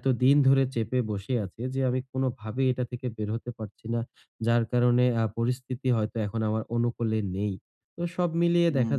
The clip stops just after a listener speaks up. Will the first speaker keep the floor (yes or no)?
yes